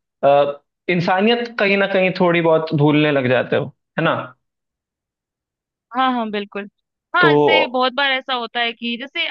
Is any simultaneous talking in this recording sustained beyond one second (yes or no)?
no